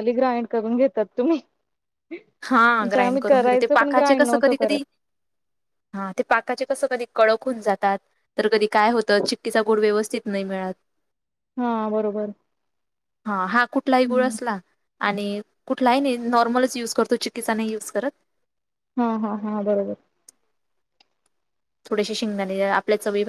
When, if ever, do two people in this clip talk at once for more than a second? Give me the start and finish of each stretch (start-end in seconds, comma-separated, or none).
2.8-4.8